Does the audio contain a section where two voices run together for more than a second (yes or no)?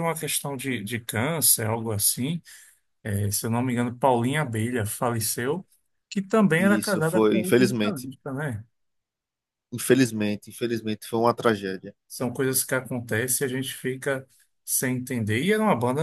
yes